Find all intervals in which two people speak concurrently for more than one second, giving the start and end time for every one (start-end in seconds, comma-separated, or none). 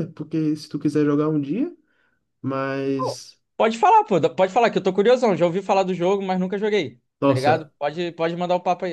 none